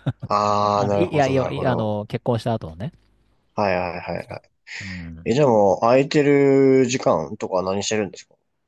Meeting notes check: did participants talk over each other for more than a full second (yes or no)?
yes